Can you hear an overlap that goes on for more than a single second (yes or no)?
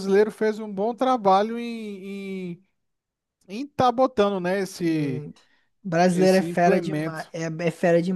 yes